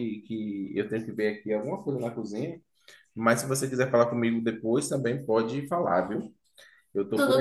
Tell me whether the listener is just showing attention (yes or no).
yes